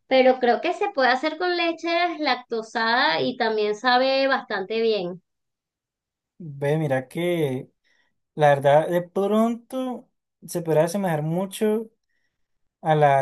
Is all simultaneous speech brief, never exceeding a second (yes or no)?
yes